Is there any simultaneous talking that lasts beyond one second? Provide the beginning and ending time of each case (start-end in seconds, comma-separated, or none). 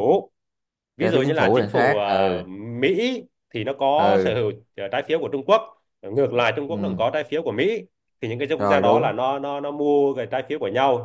1.0-2.3